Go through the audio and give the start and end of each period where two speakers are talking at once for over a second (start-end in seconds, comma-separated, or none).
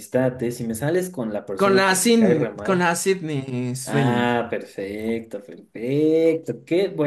1.6-2.9